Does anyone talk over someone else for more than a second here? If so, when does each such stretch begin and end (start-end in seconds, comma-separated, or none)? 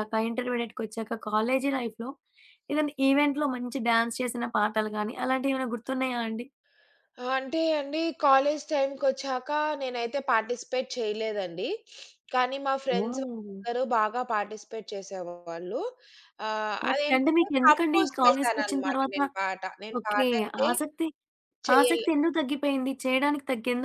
16.9-19.2